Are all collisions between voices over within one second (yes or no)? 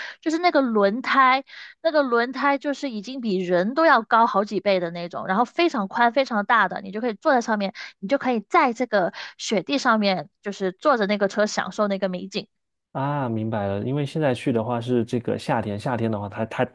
yes